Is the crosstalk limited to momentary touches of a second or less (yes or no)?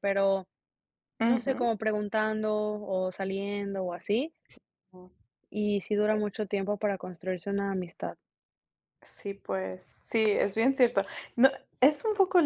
yes